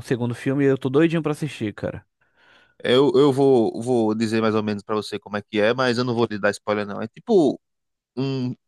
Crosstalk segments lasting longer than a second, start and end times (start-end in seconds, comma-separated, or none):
none